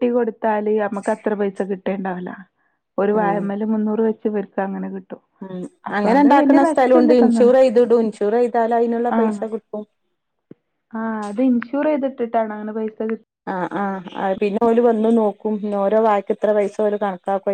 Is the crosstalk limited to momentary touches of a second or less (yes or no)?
no